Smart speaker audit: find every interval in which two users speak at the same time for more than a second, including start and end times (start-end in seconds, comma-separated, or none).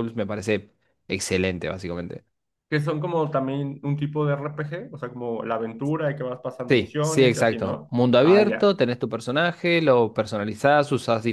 6.7-8.8